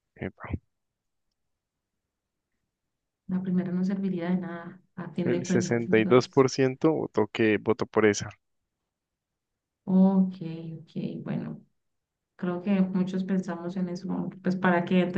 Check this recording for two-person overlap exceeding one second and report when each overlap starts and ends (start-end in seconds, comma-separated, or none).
5.2-6.4